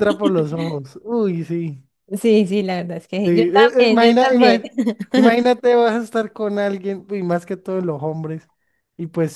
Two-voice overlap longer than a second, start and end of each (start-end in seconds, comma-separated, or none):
3.2-4.6